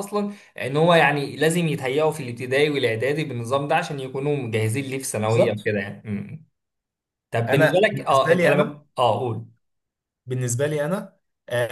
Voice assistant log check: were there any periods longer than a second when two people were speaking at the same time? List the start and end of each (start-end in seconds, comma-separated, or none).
7.5-8.8